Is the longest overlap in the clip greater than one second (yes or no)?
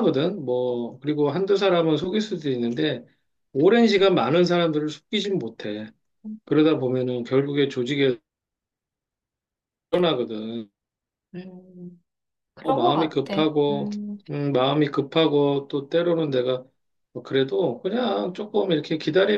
yes